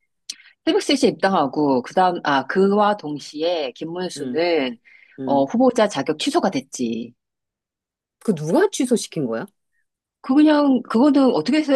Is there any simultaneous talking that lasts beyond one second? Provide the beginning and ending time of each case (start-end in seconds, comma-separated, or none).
none